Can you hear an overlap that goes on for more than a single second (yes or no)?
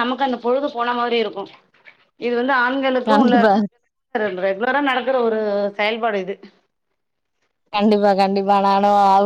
no